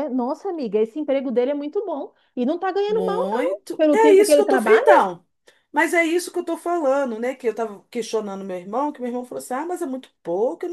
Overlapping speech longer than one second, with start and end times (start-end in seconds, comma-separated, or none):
2.9-5.1